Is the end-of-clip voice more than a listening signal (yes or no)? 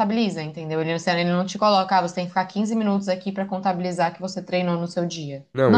yes